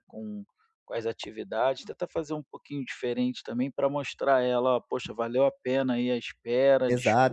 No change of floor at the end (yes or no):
no